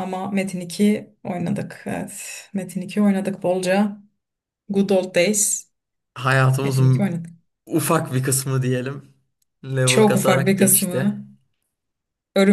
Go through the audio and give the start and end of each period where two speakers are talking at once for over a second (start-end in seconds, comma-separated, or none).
9.9-11.2